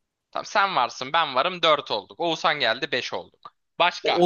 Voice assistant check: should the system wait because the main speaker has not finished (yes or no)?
no